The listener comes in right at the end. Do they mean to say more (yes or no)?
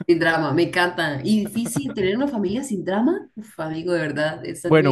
yes